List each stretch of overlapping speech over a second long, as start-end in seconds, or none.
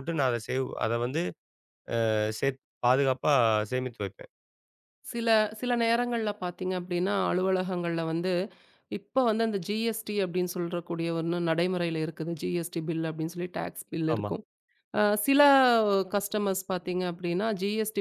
none